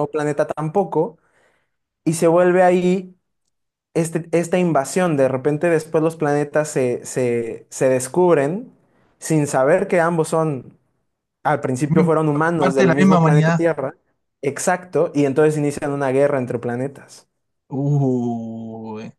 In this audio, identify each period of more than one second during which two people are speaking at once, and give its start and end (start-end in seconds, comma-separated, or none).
11.9-13.6